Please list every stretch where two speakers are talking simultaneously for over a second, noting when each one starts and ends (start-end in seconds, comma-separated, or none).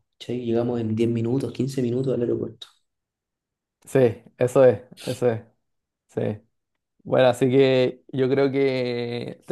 none